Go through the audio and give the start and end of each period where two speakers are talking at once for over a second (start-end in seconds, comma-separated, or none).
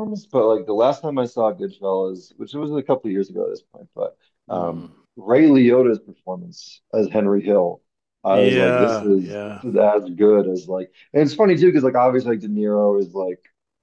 8.3-9.6